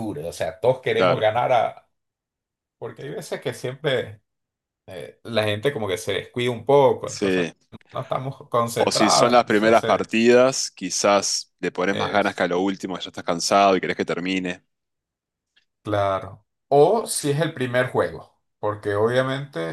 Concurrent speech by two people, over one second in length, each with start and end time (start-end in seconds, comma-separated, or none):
8.8-10.1